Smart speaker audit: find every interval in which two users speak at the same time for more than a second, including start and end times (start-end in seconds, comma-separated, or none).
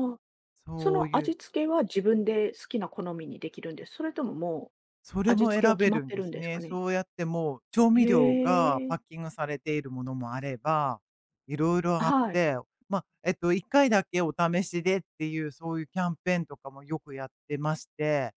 5.2-6.8